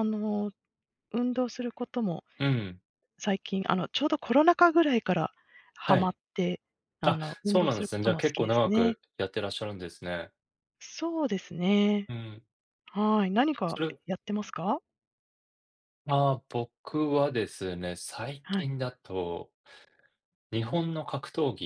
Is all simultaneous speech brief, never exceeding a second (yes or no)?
no